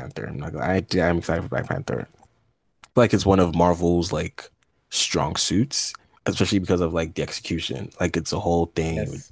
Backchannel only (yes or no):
yes